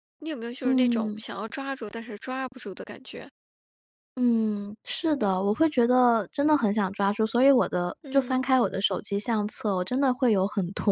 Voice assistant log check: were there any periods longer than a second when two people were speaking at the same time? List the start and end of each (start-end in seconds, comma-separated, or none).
none